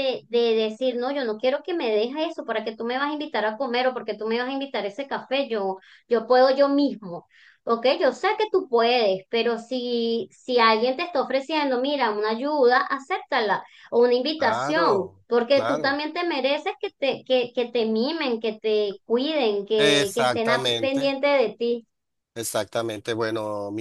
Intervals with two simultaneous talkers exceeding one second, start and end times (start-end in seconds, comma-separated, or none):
14.4-16.0, 19.8-21.1